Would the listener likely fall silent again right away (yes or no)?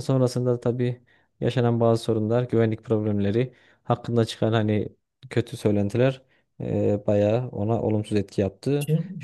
no